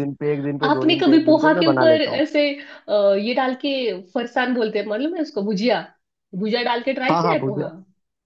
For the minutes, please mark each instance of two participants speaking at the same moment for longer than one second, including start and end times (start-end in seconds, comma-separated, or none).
0.7-2.2